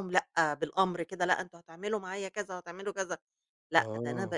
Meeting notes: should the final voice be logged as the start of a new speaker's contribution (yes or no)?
no